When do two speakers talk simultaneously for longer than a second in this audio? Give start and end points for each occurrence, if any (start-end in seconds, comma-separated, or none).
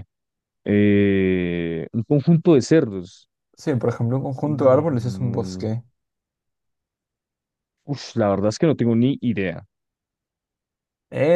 4.4-5.6